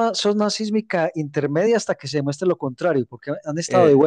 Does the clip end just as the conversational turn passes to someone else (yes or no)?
no